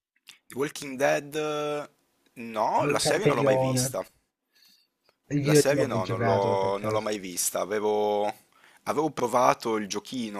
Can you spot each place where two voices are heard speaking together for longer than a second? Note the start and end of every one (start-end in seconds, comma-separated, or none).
2.8-4.0, 5.4-7.1